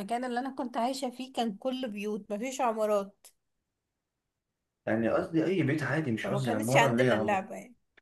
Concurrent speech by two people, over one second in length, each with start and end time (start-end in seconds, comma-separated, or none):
6.2-7.5